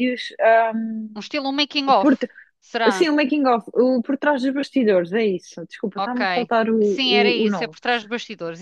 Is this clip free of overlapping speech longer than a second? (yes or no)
no